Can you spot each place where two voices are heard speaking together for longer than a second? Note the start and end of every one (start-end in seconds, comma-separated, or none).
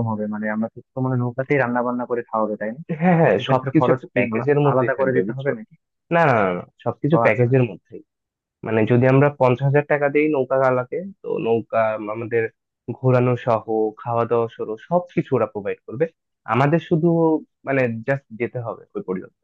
3.4-5.5